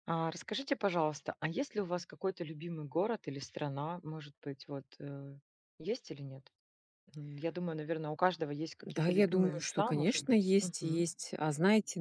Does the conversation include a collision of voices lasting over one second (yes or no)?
yes